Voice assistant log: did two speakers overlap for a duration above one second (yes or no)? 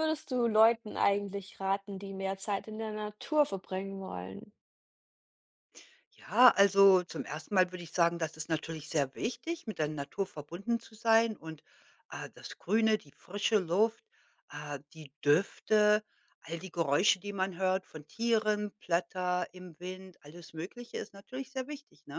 no